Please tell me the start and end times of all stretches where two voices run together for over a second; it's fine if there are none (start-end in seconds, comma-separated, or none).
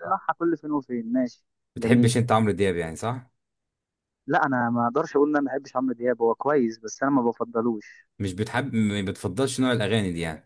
none